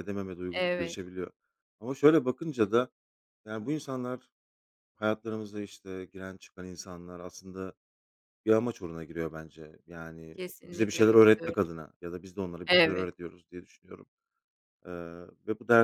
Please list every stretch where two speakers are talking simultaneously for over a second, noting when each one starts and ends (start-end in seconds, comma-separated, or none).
10.3-11.7